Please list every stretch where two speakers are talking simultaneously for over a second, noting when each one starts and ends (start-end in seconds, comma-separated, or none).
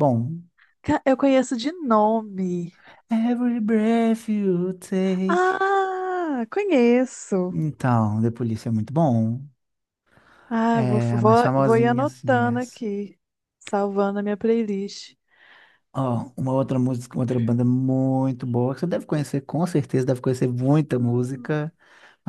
10.7-12.8